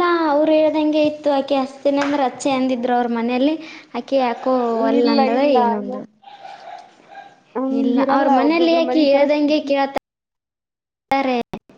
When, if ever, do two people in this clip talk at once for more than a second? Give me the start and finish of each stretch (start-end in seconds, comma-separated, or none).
7.8-9.7